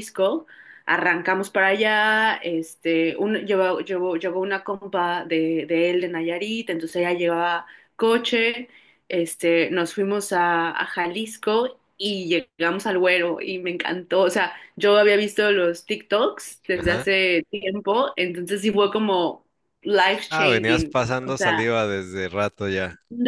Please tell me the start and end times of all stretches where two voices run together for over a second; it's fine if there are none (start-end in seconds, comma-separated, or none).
20.3-21.7